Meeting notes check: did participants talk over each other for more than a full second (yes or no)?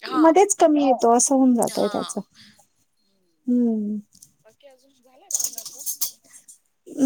no